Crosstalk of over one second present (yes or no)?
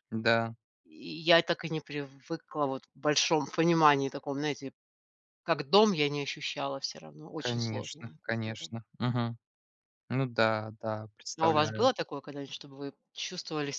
yes